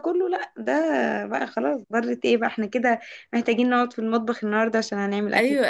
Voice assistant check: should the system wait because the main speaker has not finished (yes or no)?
no